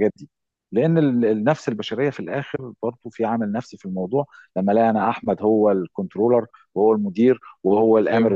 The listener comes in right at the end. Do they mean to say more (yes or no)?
no